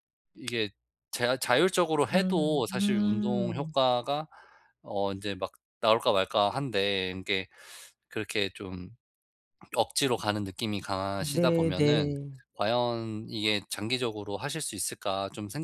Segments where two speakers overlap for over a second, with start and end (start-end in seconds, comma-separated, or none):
2.1-3.7